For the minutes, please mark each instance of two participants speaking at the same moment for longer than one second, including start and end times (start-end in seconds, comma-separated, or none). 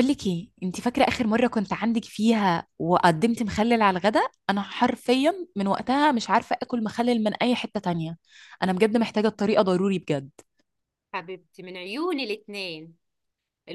none